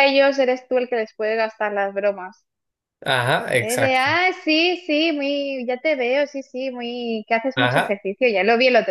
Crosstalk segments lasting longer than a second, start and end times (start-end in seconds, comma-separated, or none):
none